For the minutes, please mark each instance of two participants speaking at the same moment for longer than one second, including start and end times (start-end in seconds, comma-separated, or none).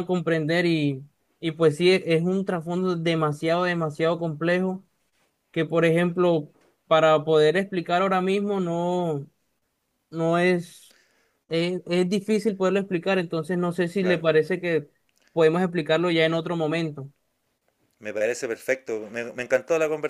none